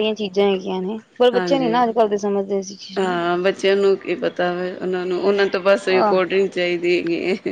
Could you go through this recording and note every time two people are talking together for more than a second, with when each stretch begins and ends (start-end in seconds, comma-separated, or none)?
none